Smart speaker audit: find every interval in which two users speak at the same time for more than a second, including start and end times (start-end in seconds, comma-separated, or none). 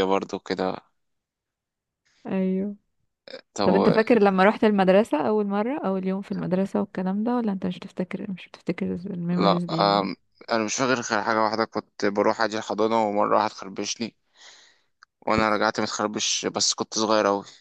none